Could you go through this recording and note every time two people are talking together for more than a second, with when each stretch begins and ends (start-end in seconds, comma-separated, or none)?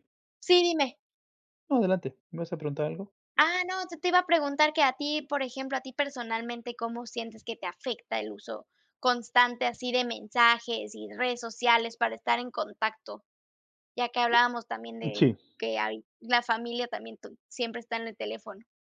none